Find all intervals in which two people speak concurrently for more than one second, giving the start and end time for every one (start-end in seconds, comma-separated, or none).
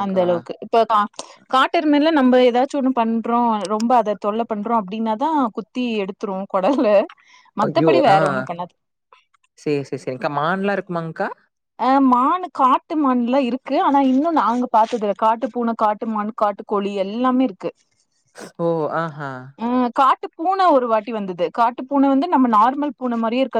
none